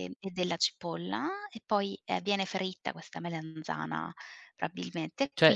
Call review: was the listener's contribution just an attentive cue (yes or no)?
no